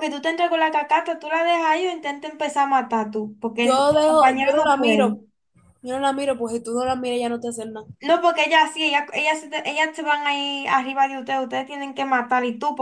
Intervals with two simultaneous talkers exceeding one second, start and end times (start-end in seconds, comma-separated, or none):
3.6-5.2